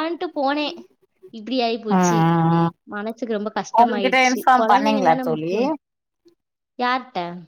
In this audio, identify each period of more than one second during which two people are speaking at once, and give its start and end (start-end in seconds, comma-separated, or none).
3.8-5.5